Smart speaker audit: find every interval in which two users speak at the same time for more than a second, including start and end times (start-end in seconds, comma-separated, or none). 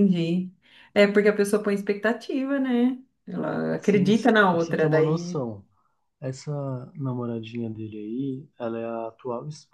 3.8-5.5